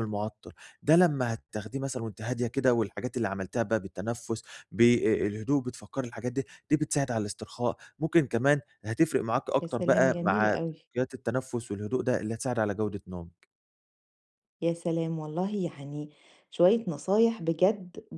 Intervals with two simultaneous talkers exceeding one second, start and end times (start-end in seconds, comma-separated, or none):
9.6-10.8